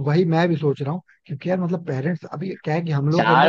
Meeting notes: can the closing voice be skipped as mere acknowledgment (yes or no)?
no